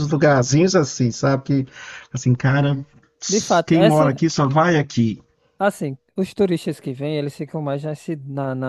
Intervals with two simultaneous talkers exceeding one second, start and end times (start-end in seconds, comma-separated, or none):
none